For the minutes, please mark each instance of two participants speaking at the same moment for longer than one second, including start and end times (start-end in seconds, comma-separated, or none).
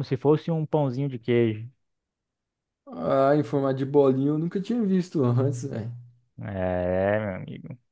none